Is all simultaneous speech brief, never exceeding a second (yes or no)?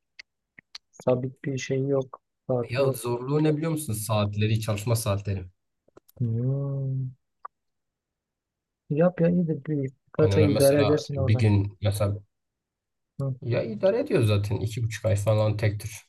no